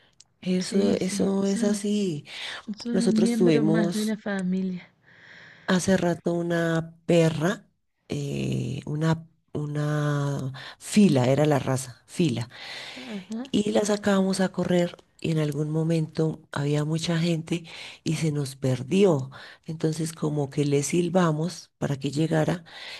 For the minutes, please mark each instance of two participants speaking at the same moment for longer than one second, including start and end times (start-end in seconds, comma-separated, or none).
0.6-1.8, 2.9-4.2